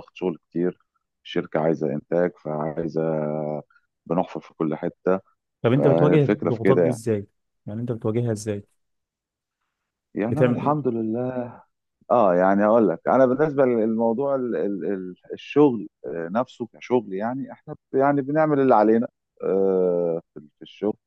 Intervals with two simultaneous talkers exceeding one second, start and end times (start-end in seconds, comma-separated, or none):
5.7-7.0